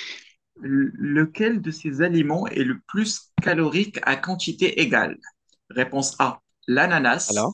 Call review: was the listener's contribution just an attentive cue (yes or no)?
yes